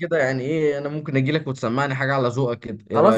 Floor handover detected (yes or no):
yes